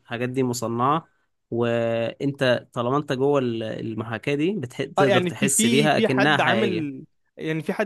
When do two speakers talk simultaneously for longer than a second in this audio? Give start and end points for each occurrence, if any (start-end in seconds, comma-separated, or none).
5.0-6.9